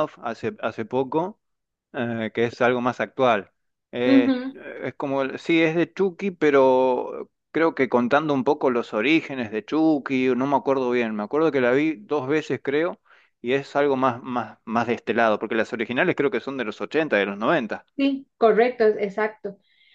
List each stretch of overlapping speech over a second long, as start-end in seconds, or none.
none